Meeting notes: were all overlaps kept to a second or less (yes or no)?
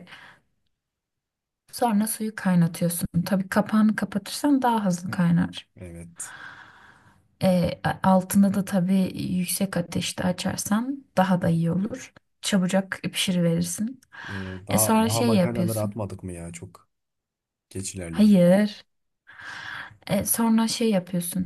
no